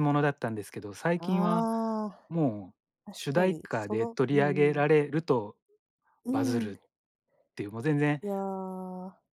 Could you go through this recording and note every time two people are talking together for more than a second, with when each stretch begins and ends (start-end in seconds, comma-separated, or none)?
3.1-4.8